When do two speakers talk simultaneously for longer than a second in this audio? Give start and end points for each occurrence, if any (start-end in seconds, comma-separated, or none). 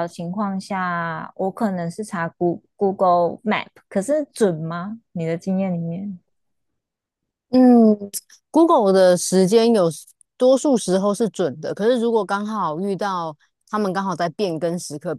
none